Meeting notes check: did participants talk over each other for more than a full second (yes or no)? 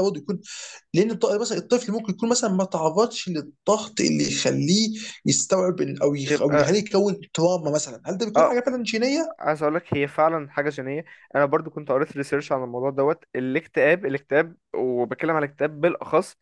no